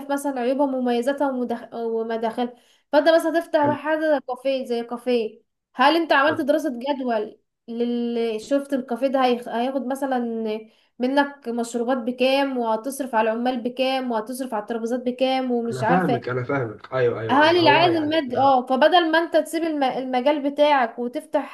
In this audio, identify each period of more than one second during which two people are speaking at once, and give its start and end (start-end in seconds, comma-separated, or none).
17.3-18.5